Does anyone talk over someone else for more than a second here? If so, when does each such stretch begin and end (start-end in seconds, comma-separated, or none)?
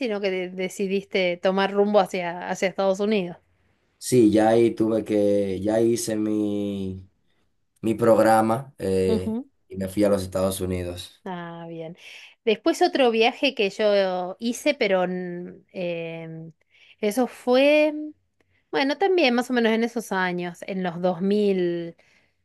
none